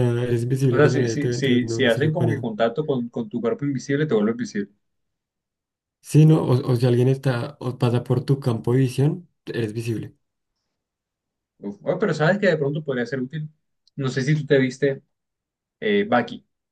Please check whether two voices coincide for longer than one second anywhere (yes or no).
yes